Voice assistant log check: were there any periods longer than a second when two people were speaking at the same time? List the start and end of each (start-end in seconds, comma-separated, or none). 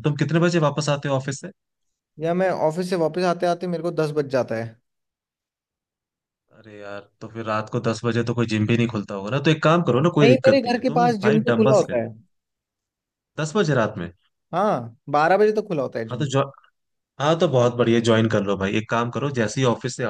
10.2-12.0